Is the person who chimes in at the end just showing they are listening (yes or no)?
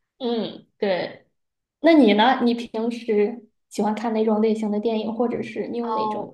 no